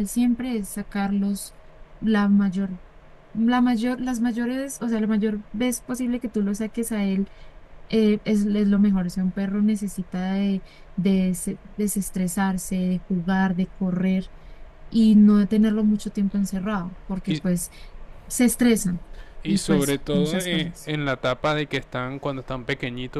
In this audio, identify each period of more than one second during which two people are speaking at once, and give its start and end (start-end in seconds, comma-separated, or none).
19.4-20.9